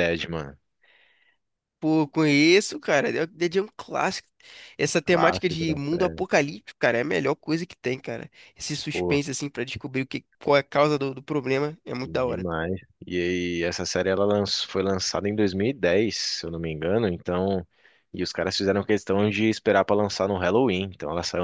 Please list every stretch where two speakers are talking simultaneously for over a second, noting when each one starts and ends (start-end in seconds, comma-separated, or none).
5.0-6.2